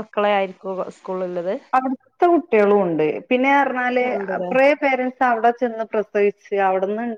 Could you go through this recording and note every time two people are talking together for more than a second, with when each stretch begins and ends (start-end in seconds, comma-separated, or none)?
none